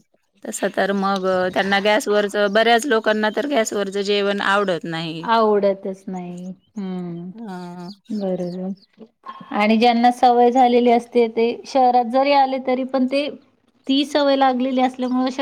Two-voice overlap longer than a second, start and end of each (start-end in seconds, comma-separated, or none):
none